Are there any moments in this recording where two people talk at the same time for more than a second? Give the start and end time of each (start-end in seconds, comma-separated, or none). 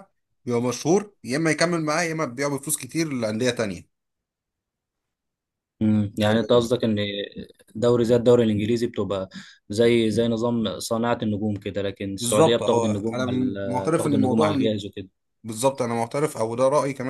12.2-14.8